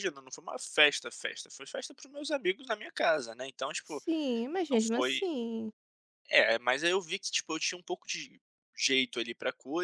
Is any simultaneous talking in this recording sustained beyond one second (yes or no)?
no